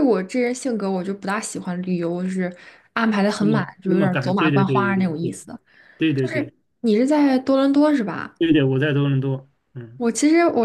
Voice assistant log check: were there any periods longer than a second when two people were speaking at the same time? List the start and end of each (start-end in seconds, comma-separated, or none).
3.4-5.4